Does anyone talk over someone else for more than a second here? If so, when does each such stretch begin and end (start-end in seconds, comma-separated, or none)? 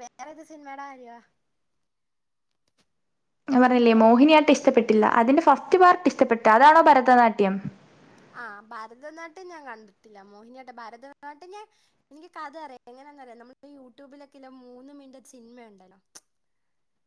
none